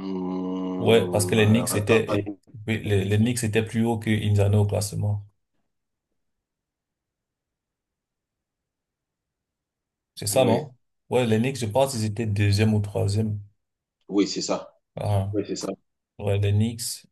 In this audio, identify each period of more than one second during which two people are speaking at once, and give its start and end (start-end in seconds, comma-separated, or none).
0.8-2.0